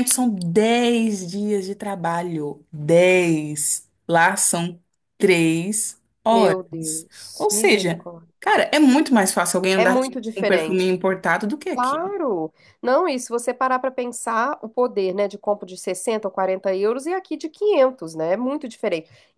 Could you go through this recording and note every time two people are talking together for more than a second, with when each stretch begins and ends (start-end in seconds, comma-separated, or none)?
6.3-8.3, 9.8-11.0